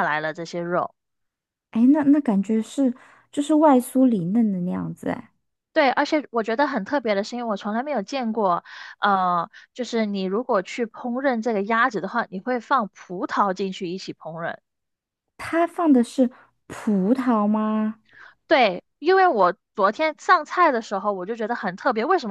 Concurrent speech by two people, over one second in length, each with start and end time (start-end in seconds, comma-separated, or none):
none